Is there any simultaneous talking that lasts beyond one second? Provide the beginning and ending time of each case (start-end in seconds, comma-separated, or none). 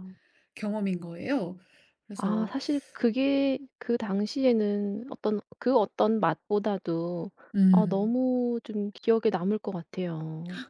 none